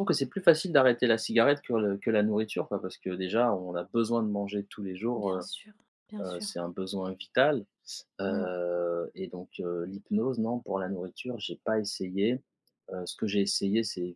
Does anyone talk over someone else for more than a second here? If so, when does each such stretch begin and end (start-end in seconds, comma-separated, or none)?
none